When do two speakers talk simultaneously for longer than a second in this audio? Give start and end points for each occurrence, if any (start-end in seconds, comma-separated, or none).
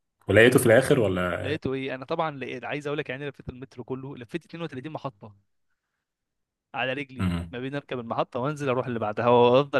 none